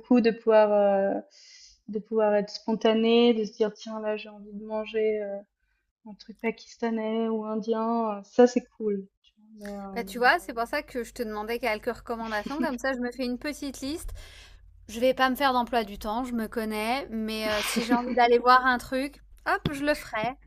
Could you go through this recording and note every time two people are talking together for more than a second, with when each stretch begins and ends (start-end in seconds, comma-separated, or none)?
none